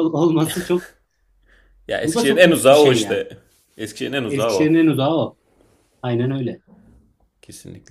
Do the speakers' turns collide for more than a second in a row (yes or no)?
yes